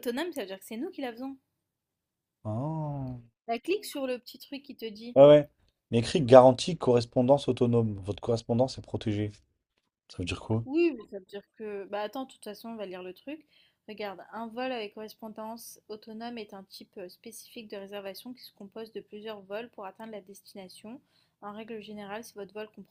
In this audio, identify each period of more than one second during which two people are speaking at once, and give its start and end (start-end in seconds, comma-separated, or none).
none